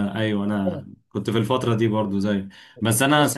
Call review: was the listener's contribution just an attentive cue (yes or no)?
yes